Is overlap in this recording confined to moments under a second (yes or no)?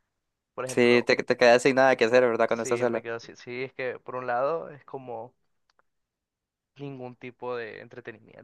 yes